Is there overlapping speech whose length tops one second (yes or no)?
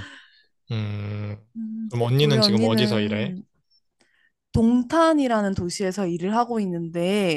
yes